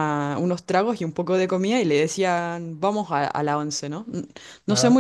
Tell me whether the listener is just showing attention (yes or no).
yes